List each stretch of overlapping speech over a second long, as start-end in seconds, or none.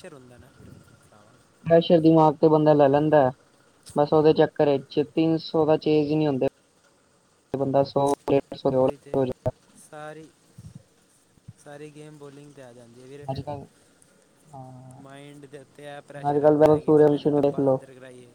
16.3-17.8